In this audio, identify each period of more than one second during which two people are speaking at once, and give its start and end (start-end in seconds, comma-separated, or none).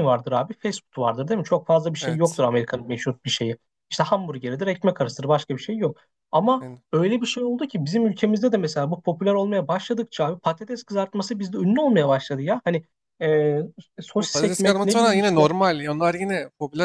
14.2-15.4